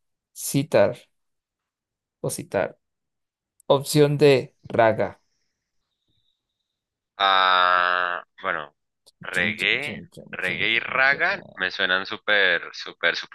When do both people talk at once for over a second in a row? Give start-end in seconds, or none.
9.3-11.7